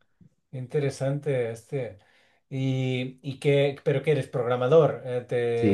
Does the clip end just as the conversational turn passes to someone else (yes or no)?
yes